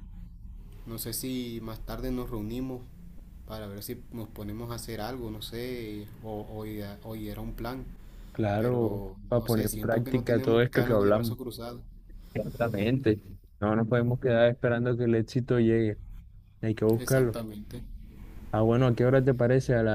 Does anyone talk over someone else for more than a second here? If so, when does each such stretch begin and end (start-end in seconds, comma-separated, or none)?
8.6-11.4